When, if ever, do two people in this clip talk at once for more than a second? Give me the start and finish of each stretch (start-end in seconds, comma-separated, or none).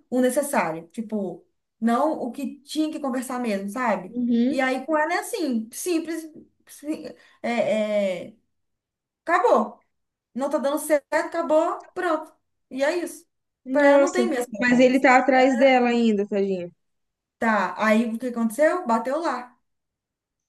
13.7-15.1